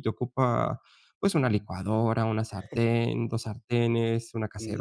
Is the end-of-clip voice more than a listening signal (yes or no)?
no